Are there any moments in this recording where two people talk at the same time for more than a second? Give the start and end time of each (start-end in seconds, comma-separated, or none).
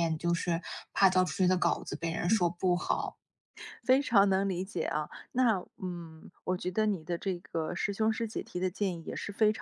none